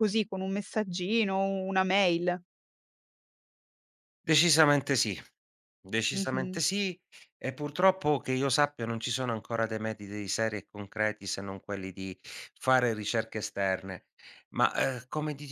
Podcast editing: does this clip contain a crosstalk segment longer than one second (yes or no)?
no